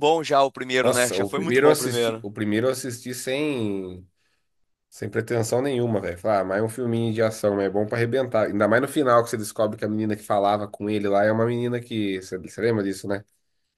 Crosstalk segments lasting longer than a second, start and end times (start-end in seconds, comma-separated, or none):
0.8-2.3